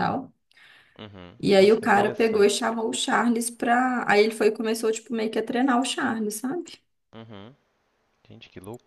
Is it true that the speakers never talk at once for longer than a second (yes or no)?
no